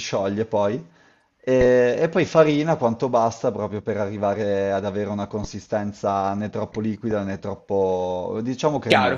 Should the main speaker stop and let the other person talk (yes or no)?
yes